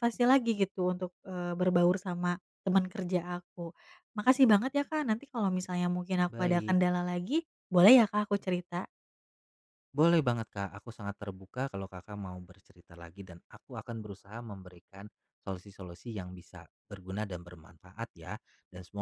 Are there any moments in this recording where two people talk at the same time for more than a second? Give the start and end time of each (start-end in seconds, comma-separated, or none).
none